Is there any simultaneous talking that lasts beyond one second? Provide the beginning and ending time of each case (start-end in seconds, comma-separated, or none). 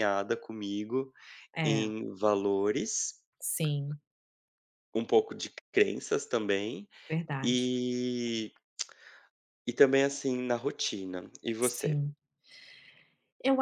none